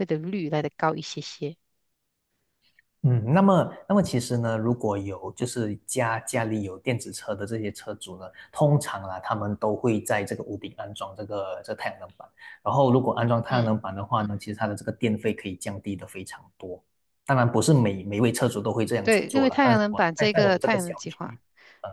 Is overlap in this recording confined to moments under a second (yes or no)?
no